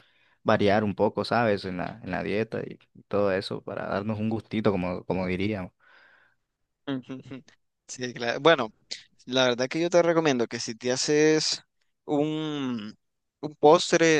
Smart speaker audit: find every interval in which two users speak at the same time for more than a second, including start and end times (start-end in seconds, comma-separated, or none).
none